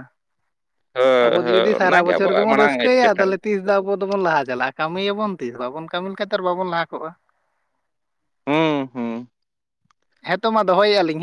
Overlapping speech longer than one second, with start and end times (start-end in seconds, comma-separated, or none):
1.2-3.3